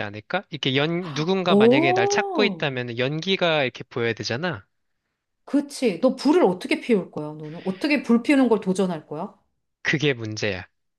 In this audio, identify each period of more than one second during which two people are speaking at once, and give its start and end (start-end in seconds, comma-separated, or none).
1.5-2.7